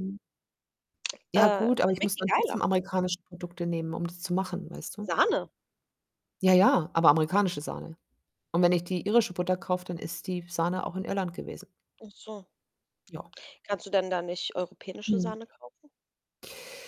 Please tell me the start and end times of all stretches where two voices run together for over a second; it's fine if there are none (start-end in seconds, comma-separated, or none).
1.3-2.6